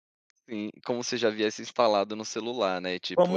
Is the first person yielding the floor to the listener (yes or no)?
yes